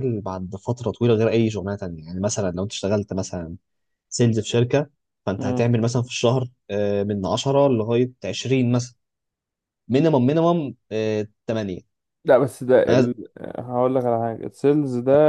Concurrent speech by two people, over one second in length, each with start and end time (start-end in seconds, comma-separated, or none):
none